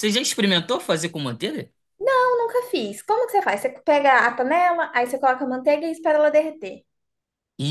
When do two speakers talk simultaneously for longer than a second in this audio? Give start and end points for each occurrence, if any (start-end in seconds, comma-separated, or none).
none